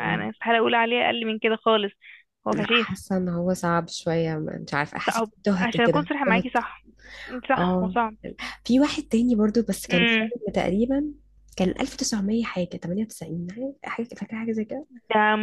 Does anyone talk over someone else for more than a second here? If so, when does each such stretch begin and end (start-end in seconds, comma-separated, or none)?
5.1-6.6